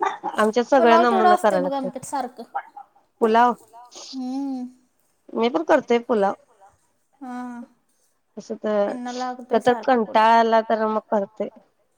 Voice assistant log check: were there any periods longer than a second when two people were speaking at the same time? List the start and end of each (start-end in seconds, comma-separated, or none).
0.8-2.0, 8.8-10.2